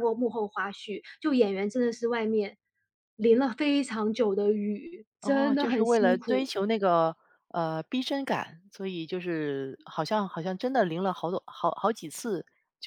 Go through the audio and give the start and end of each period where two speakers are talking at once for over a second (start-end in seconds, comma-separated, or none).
5.2-6.5